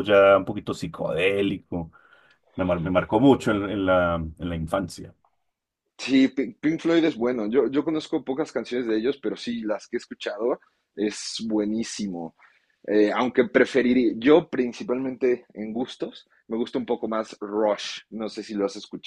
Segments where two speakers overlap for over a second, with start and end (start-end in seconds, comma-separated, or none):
none